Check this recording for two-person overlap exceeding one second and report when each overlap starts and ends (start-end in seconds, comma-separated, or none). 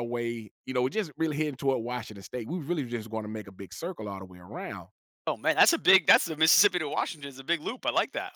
none